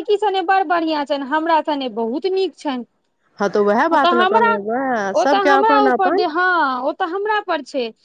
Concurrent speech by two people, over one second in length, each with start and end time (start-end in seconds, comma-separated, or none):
none